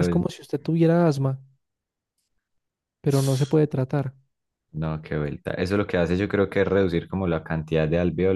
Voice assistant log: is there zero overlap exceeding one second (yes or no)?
yes